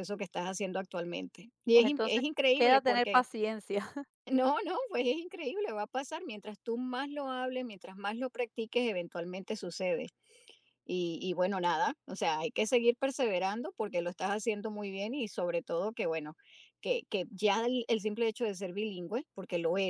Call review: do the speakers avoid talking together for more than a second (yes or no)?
no